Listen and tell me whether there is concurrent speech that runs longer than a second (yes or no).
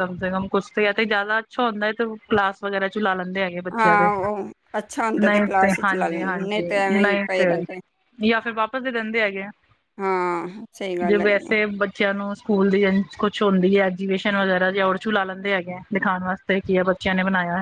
yes